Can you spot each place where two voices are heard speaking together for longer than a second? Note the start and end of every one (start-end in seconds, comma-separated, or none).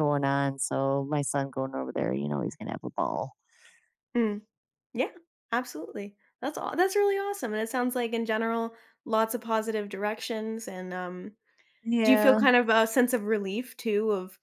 none